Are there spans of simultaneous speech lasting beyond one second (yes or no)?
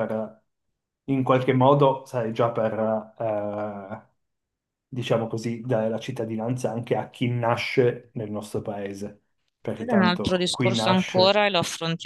yes